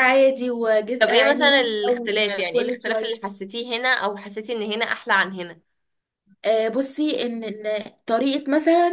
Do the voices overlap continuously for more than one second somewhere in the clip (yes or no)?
yes